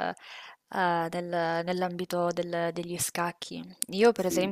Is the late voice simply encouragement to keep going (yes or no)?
yes